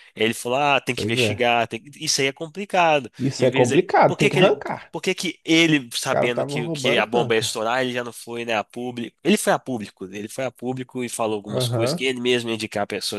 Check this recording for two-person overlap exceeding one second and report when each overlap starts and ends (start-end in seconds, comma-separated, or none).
3.2-4.9, 6.1-7.6